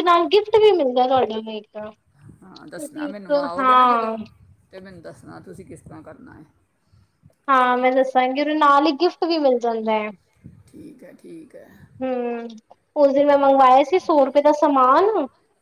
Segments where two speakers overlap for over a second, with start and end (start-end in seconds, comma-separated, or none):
2.8-4.1